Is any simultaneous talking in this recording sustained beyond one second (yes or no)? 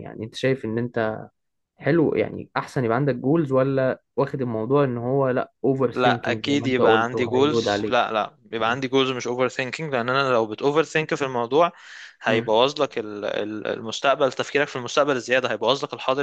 yes